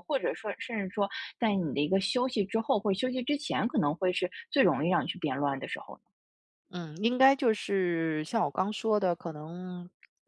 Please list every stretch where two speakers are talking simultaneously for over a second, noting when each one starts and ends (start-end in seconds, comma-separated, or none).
none